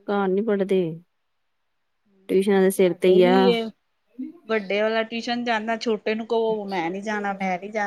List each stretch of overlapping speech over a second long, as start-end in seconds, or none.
none